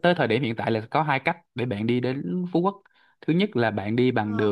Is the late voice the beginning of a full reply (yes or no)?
no